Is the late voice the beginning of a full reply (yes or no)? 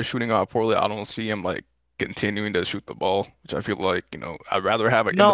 yes